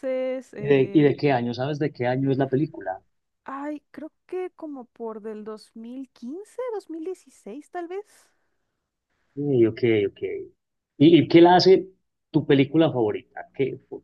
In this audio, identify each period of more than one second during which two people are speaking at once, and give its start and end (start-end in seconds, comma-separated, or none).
none